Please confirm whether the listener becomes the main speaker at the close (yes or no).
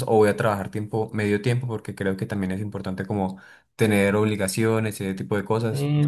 yes